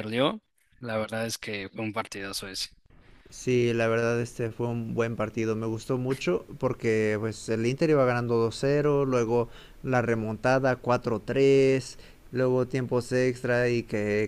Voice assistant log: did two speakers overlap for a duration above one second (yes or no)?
no